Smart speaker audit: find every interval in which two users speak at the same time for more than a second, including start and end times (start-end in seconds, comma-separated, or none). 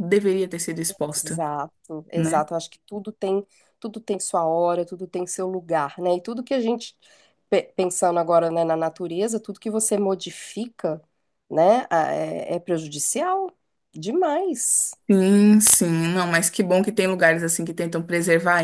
none